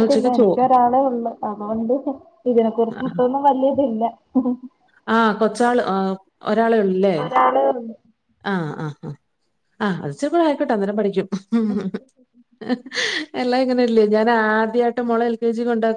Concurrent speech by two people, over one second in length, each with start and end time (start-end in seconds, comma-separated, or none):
none